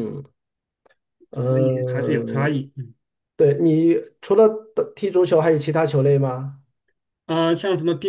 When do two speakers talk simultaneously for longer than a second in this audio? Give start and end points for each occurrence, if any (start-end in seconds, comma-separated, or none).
1.3-2.6